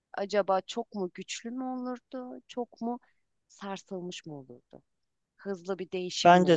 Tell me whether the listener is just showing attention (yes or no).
no